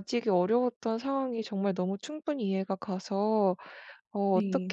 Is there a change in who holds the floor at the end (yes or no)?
no